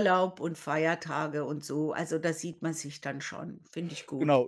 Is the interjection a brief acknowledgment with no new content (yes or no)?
no